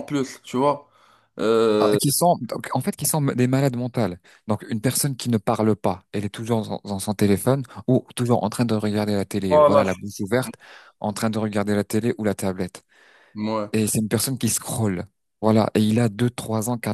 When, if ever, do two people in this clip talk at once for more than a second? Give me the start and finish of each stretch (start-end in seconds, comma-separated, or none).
none